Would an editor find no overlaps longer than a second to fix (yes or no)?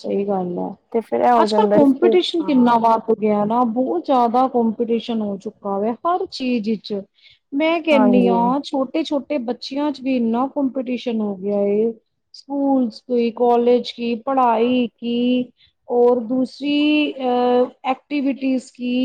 no